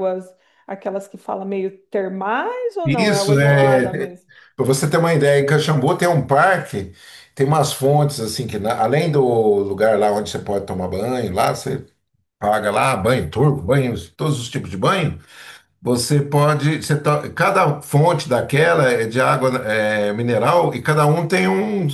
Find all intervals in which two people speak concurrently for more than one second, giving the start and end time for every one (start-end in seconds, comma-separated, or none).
2.8-4.2